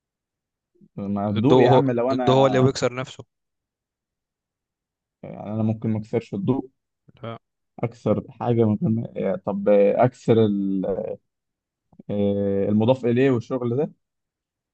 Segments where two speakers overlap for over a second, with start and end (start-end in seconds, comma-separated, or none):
1.4-2.7